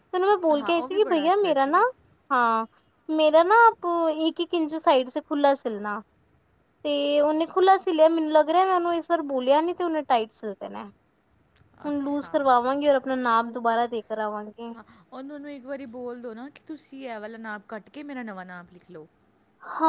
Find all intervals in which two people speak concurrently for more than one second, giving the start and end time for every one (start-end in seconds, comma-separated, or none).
0.5-1.8